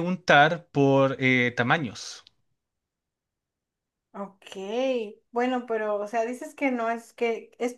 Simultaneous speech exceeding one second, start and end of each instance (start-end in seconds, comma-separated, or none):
none